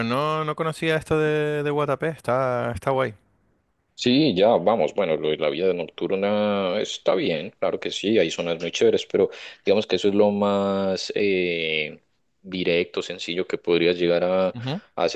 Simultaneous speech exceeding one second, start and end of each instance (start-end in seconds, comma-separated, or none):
none